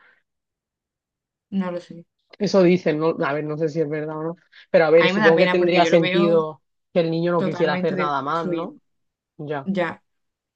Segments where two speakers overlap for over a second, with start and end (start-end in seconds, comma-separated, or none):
5.0-6.5, 7.3-8.8